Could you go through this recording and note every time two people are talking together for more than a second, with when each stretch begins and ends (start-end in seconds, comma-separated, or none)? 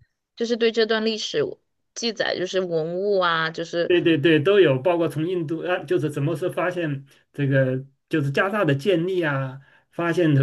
none